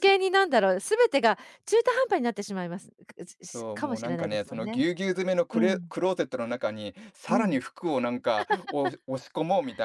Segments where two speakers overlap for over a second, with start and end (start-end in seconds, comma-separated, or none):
3.4-4.8